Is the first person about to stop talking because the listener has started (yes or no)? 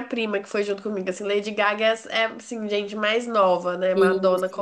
no